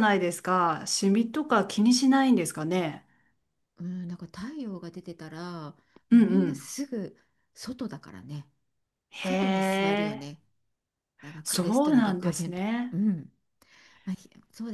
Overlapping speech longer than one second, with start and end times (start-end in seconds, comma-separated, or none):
11.4-13.0